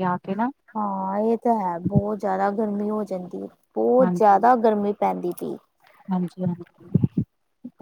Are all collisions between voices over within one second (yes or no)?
yes